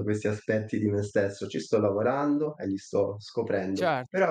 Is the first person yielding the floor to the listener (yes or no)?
no